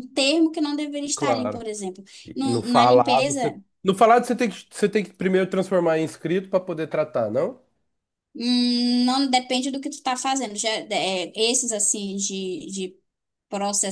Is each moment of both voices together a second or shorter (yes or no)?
no